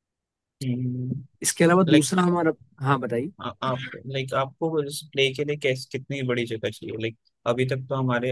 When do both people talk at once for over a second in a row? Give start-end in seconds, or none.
none